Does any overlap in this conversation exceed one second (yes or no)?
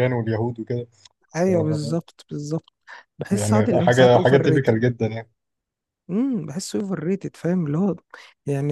yes